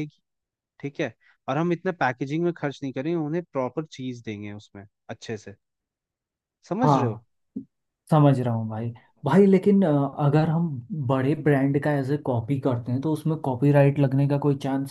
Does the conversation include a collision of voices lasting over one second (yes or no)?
no